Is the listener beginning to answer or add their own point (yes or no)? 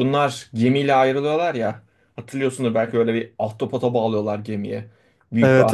yes